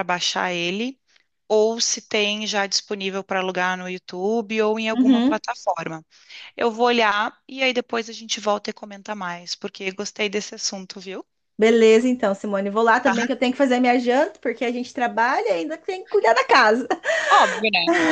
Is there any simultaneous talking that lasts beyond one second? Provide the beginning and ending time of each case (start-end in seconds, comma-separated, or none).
none